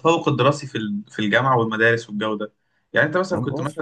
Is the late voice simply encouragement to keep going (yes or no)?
yes